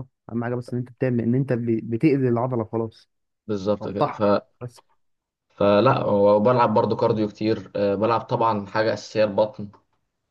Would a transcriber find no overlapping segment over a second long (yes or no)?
yes